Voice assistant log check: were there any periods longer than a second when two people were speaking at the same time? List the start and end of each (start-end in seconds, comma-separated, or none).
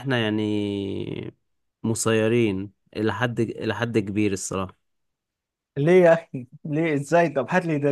none